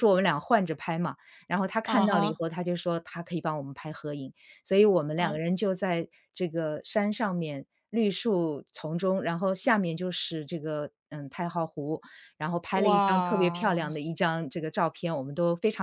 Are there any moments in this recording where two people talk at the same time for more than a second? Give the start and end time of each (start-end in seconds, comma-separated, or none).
12.7-14.0